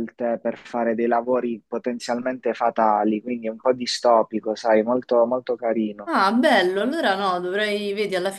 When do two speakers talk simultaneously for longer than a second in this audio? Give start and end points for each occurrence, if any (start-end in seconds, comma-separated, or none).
none